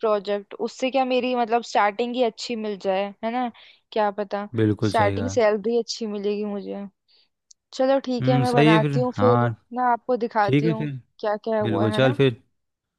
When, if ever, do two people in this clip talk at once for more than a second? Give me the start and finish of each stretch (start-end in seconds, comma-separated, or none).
8.2-9.5